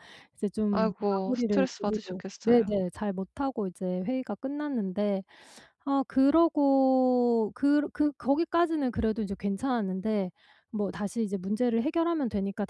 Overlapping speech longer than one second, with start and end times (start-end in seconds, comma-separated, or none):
0.7-2.8